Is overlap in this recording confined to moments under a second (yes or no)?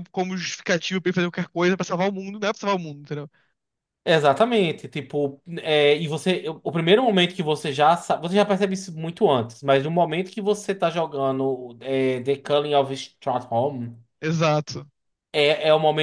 yes